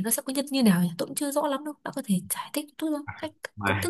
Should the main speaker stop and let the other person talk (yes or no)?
yes